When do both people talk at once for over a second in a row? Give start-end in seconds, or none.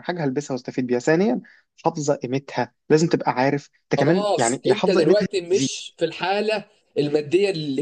4.0-5.7